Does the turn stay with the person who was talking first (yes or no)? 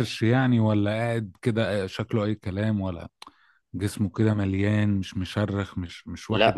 no